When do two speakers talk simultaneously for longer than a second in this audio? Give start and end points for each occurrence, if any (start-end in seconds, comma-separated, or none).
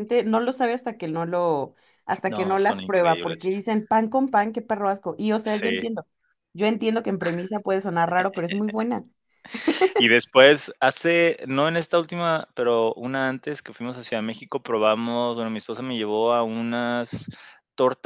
2.3-3.6